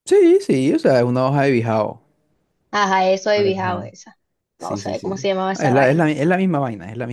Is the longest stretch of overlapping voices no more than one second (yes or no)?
no